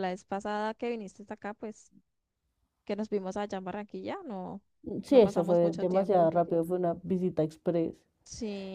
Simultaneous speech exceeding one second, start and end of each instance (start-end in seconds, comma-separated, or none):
5.1-6.3